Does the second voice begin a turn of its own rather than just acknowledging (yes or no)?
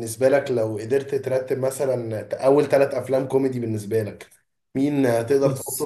no